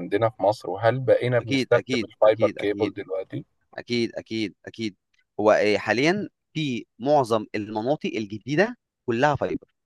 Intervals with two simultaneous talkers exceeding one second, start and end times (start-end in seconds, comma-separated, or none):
1.4-3.0